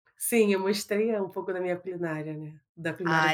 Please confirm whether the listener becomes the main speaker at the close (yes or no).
yes